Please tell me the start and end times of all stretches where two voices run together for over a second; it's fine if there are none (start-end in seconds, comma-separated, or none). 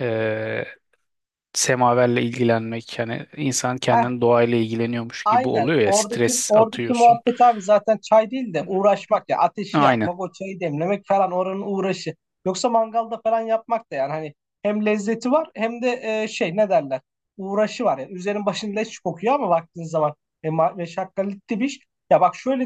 5.2-7.2